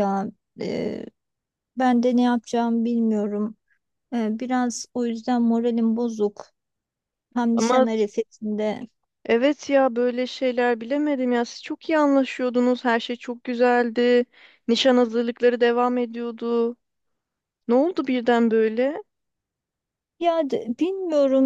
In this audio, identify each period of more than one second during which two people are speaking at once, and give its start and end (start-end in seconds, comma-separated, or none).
none